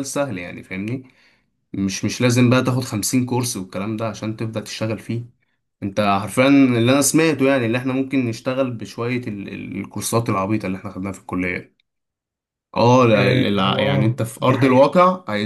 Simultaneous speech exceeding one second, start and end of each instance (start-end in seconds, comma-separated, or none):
13.1-14.9